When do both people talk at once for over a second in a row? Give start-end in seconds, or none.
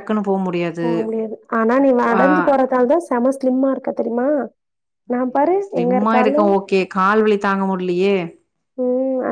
none